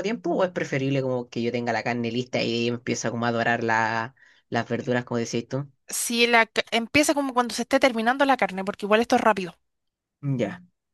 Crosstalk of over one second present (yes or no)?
no